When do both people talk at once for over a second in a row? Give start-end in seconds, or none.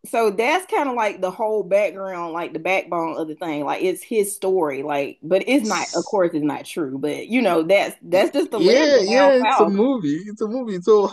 8.1-9.7